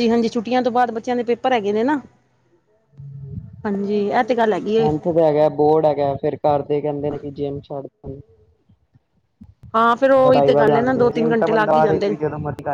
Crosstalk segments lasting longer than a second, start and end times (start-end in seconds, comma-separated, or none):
10.2-12.2